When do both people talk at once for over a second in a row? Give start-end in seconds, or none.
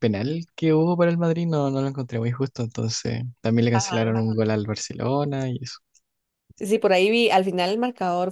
none